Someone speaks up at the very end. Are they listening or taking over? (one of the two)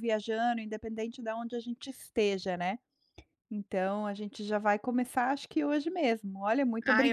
taking over